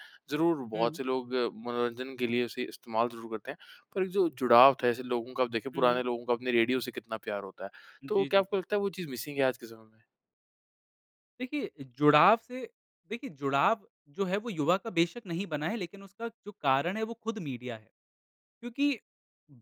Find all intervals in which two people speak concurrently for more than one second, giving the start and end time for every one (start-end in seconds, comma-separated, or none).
none